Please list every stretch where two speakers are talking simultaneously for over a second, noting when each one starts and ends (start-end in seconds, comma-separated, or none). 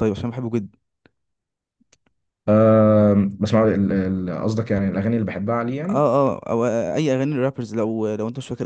none